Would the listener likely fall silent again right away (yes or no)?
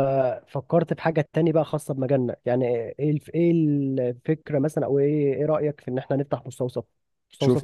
no